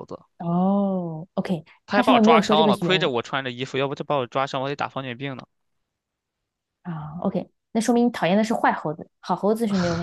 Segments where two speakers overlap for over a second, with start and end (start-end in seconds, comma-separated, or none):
1.9-3.1